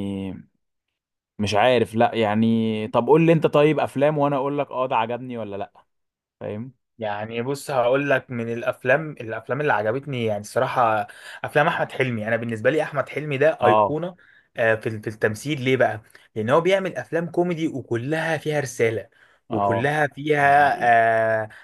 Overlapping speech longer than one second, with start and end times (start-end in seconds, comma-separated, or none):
none